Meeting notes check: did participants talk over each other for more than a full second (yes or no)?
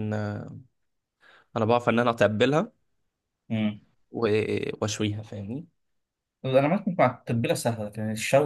no